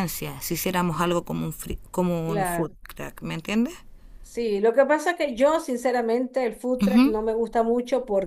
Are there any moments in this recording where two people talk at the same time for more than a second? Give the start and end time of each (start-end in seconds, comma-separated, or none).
none